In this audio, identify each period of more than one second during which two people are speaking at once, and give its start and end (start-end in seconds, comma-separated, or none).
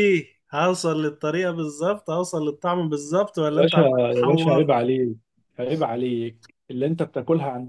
3.5-4.7